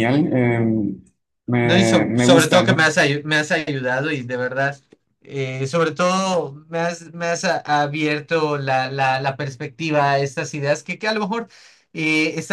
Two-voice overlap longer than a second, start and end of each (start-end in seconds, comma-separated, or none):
1.6-2.8